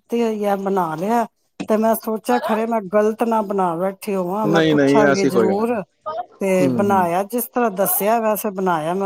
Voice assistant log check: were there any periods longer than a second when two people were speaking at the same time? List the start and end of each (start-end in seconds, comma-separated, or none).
4.5-5.8